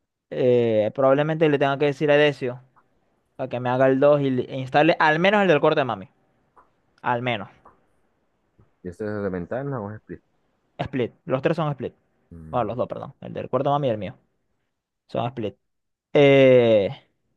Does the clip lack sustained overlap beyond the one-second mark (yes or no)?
yes